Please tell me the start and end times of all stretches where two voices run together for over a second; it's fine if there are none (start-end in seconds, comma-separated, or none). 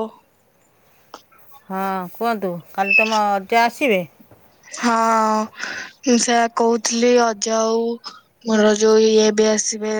none